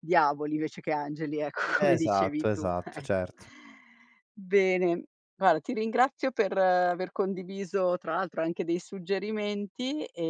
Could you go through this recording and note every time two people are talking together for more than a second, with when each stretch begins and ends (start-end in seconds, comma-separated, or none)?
1.8-3.3